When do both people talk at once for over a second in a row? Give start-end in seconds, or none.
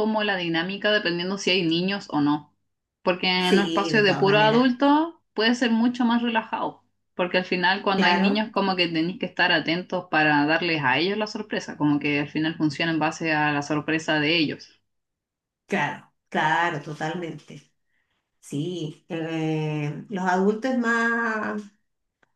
3.4-4.7